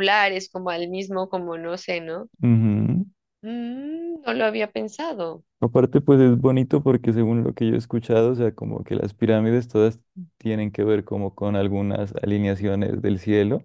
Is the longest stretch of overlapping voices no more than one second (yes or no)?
yes